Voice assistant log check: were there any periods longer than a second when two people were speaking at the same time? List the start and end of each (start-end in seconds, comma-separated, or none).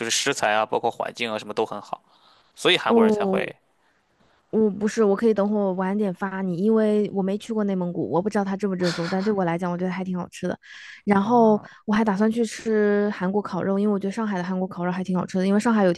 none